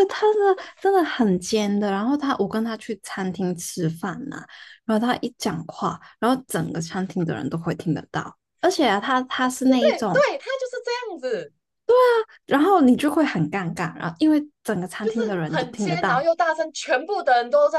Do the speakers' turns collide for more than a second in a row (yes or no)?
yes